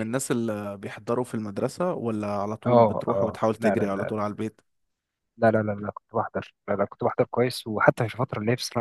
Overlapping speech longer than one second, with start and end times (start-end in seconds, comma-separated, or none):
2.7-4.2